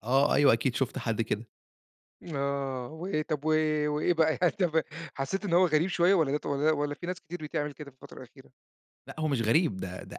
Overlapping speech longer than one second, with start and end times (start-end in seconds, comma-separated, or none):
none